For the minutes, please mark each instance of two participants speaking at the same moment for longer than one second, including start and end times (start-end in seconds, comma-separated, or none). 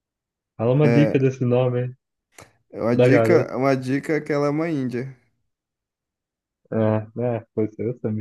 none